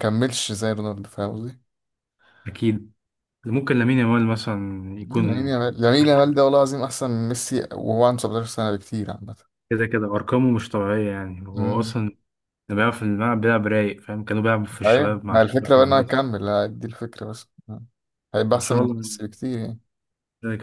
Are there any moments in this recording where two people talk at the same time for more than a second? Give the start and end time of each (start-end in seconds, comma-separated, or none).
14.8-16.2